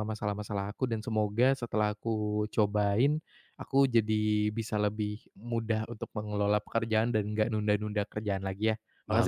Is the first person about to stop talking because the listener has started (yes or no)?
yes